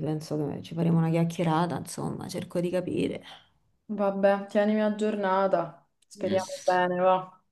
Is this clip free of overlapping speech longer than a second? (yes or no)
yes